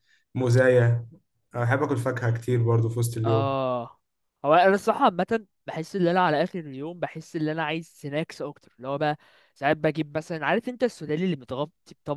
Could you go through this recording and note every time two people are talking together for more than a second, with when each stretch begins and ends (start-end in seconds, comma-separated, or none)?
none